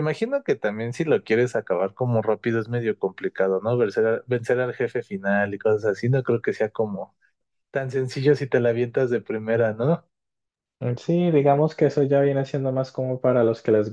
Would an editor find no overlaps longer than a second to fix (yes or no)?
yes